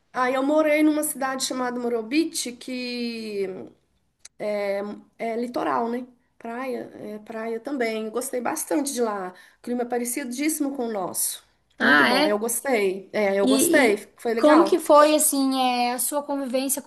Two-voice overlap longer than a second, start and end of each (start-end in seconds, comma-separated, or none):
13.4-14.8